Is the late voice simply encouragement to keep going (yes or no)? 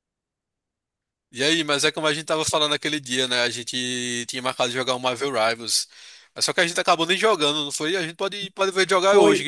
no